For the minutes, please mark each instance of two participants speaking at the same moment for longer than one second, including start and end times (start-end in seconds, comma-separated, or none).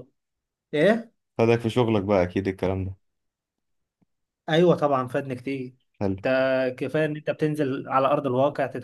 none